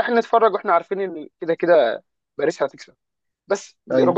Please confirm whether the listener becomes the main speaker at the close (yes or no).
no